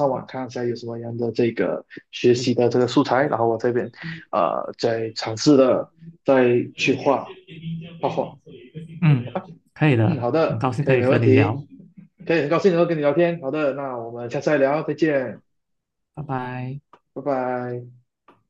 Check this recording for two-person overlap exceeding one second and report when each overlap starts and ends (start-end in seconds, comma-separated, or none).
10.0-11.6